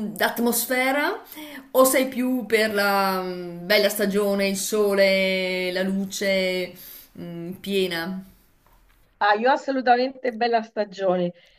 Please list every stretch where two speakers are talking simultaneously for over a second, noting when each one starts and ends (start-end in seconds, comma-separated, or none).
none